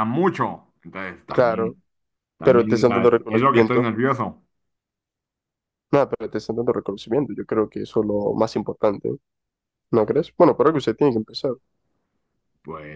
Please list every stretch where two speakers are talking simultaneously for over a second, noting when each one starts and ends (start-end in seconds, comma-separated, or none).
2.4-3.9